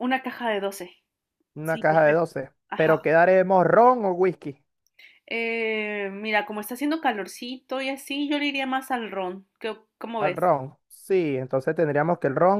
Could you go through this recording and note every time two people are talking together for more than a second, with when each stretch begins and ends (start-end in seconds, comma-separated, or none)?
1.6-3.1